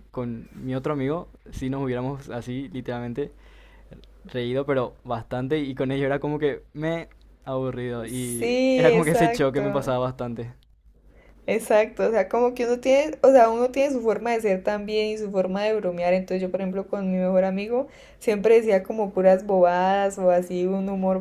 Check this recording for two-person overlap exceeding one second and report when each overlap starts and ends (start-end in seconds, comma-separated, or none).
8.1-9.9